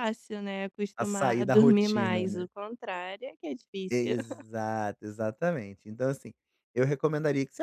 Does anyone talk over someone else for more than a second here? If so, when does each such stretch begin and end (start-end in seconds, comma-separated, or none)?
1.0-2.5